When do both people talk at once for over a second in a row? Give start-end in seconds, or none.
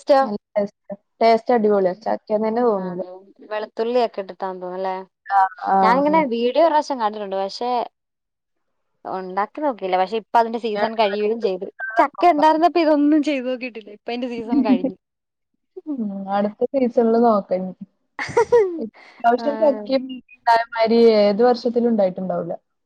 10.6-12.5